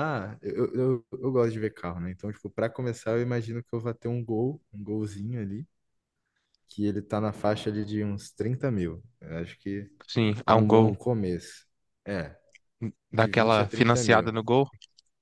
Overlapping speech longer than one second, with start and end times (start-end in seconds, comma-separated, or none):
13.1-14.3